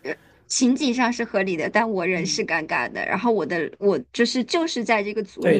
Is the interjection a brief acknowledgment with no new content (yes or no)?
no